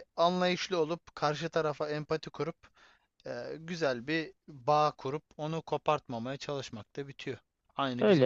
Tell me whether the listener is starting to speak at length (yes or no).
yes